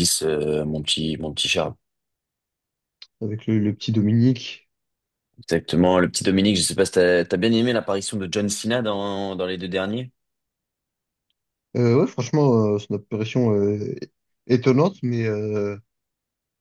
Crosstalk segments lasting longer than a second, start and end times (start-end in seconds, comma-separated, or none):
none